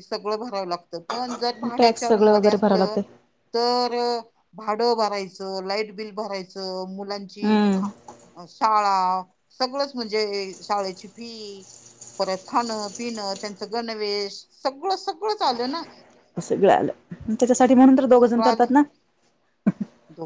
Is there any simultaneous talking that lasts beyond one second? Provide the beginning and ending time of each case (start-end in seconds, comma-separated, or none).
1.8-3.0